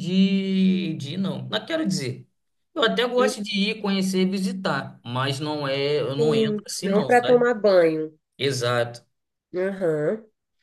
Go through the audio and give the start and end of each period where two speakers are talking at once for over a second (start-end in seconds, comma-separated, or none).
6.2-7.5